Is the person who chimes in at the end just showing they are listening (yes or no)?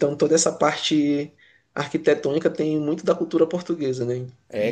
no